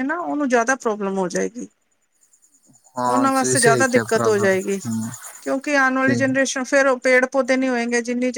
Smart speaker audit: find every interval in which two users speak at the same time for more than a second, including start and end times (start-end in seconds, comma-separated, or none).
3.1-4.5